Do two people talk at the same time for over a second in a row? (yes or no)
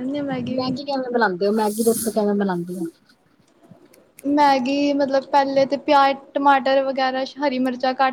no